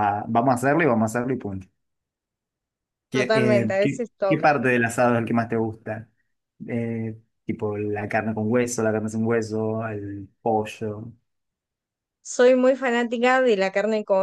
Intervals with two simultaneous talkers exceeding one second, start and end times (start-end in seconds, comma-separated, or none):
3.1-4.6